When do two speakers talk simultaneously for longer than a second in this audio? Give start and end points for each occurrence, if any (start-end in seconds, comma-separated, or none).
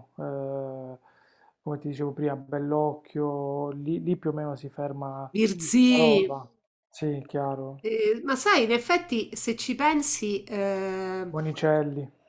none